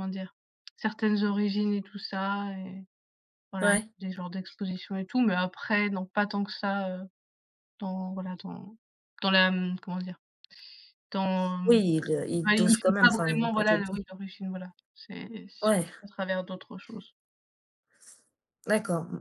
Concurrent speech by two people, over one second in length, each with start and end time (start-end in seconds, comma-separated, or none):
12.4-14.0